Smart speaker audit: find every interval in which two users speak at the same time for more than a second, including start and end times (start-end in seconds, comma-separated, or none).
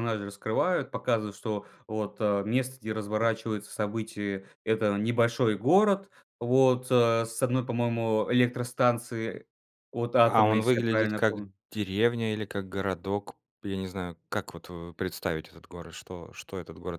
10.3-11.5